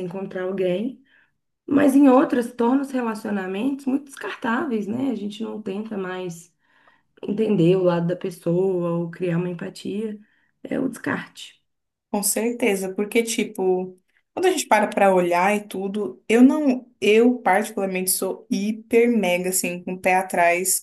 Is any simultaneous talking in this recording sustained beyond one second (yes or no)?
no